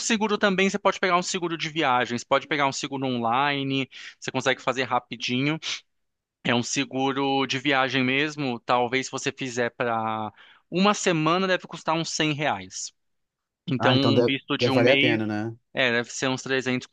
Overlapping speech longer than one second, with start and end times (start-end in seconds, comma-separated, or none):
13.8-15.2